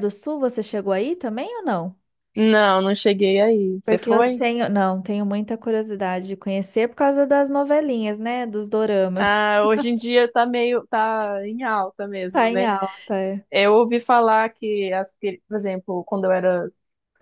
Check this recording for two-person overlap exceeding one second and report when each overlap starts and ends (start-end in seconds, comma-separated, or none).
none